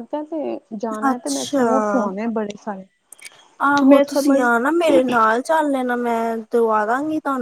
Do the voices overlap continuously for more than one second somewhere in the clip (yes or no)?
no